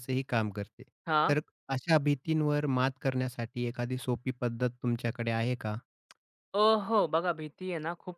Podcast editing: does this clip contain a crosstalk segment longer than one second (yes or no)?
no